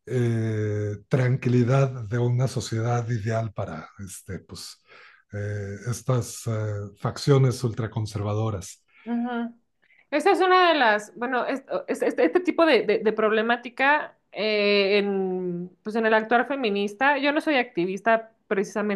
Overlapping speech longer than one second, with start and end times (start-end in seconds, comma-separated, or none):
none